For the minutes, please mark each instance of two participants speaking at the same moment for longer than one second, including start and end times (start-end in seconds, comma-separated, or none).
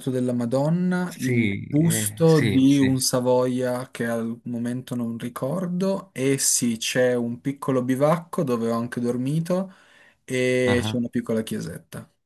1.1-3.0